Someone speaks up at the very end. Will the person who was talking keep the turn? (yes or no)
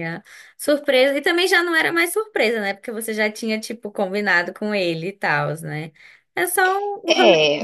no